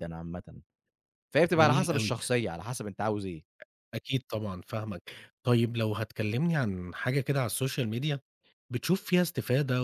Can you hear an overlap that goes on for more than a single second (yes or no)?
no